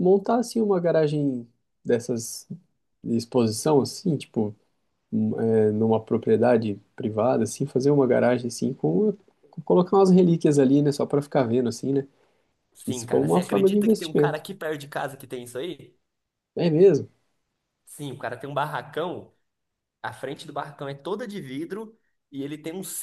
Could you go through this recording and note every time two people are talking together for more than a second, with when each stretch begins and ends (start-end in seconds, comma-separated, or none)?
12.8-14.4